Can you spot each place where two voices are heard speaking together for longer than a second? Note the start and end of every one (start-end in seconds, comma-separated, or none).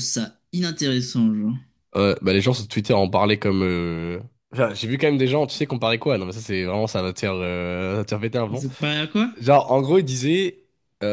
none